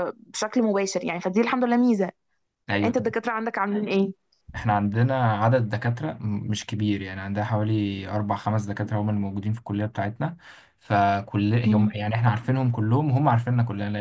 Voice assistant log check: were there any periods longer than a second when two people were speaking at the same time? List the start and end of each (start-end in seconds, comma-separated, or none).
none